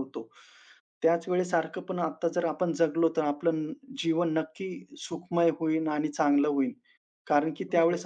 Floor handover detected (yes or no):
no